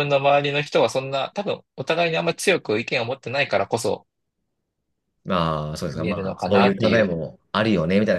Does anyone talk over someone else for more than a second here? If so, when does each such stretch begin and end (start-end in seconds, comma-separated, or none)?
5.9-7.2